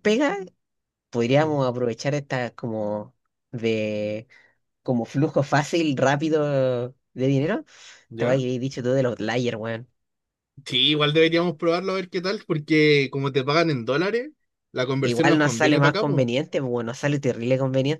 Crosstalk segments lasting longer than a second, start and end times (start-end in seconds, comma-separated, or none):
15.0-16.2